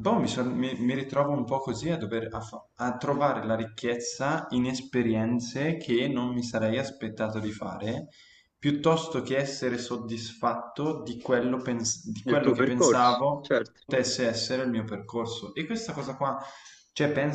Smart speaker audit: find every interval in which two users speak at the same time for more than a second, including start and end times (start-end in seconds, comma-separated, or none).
12.2-13.8